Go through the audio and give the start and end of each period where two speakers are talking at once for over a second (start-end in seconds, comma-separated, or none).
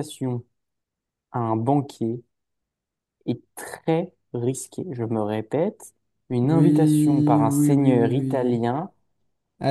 6.4-8.6